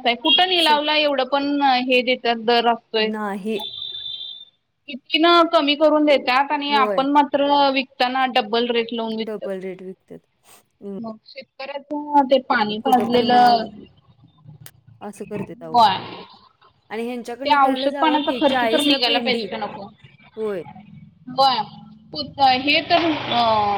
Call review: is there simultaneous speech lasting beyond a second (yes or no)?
yes